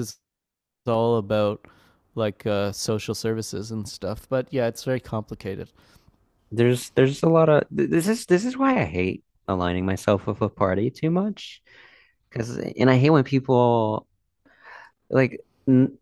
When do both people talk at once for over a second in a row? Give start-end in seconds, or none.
none